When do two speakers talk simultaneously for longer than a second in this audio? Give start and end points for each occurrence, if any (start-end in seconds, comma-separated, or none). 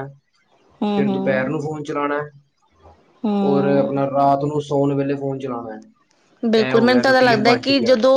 none